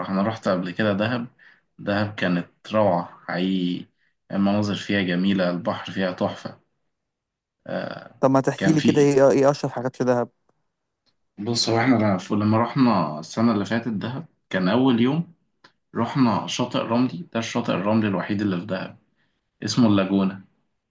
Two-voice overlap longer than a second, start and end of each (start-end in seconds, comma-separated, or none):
none